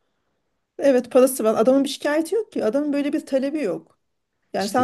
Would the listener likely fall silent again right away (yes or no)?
yes